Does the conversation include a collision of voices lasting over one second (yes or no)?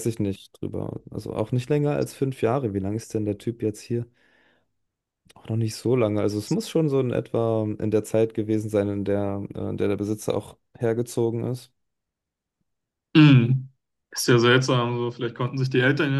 no